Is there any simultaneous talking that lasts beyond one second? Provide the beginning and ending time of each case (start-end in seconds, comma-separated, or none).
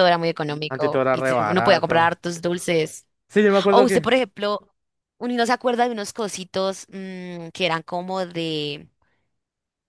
0.7-2.2